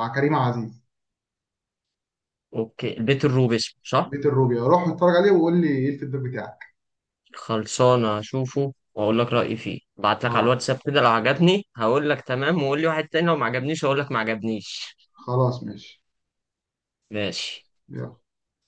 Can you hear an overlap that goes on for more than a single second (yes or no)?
no